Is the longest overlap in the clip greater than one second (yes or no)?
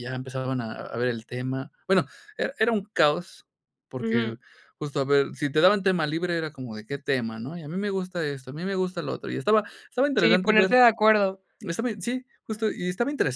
no